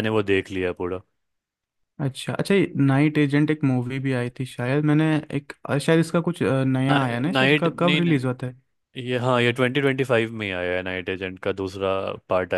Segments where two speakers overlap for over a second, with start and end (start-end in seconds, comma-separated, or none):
6.9-8.1